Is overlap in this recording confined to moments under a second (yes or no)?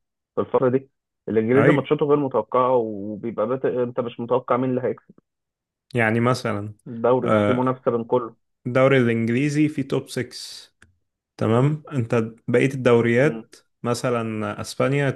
yes